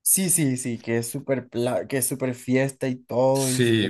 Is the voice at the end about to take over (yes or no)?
yes